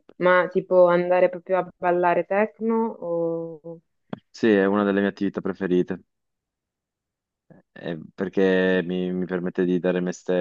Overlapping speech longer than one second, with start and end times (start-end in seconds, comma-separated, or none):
none